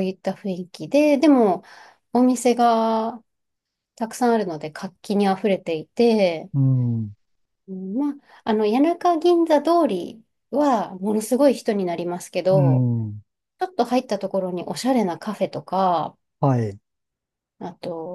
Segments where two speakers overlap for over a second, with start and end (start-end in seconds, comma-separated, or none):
none